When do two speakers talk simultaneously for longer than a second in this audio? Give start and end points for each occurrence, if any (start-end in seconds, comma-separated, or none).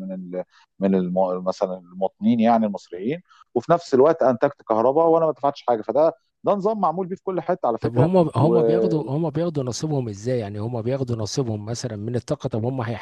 7.8-9.1